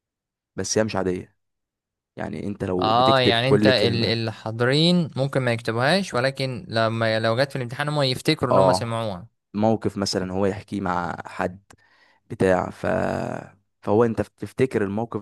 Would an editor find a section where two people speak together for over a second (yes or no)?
yes